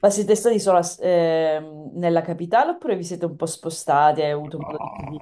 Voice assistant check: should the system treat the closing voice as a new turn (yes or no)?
yes